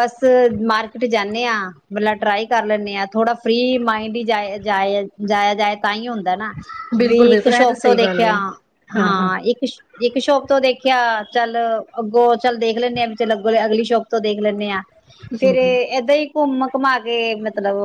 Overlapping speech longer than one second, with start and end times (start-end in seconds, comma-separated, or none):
7.0-8.3